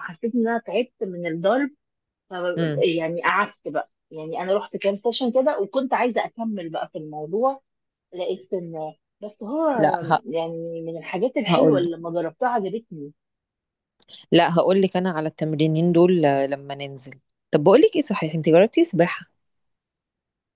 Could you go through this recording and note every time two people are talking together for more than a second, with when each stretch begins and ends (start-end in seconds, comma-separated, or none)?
none